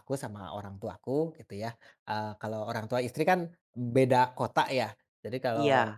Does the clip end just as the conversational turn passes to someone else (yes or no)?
no